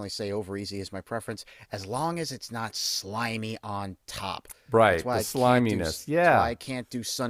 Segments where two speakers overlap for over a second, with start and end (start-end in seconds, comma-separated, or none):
4.9-6.5